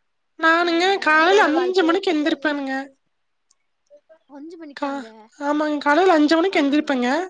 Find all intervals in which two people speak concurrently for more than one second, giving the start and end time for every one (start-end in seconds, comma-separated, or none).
0.7-2.7